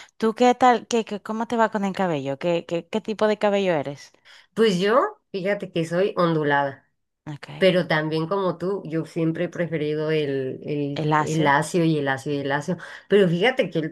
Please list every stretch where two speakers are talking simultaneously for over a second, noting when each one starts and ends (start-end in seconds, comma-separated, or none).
none